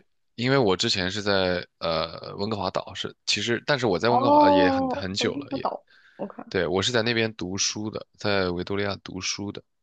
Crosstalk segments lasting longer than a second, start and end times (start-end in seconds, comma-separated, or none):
4.1-5.7